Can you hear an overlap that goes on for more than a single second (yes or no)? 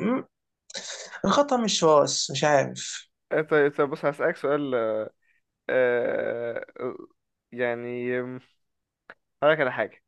no